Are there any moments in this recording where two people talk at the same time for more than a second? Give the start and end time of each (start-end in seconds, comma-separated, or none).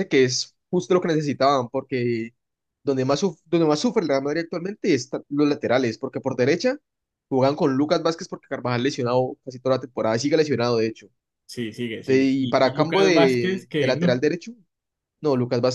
12.0-14.2